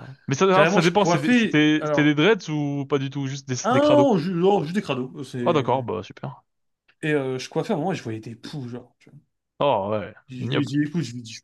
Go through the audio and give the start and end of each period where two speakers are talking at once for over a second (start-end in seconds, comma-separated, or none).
0.5-2.1